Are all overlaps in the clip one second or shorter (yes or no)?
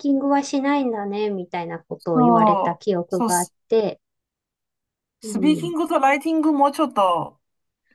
no